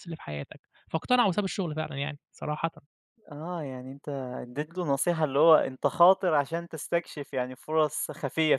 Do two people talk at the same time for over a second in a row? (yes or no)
no